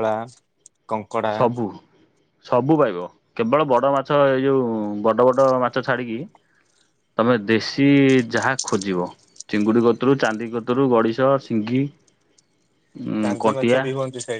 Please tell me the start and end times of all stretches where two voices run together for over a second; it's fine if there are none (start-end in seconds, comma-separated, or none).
none